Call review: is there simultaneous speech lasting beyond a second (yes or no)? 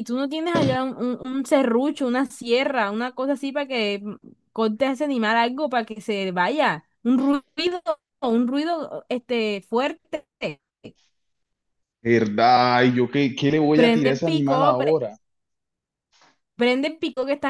yes